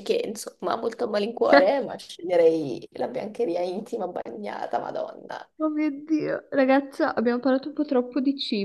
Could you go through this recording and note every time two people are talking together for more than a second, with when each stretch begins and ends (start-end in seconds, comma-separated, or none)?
none